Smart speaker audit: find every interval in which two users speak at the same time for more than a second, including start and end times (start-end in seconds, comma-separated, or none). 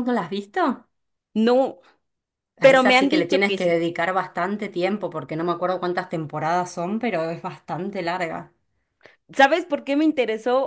2.6-3.8